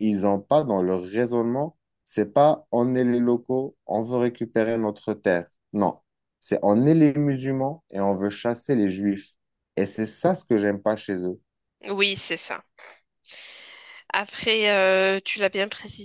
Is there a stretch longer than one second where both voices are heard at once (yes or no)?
no